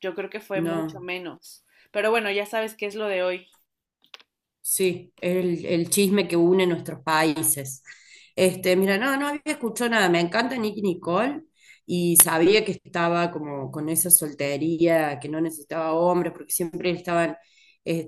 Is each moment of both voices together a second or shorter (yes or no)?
yes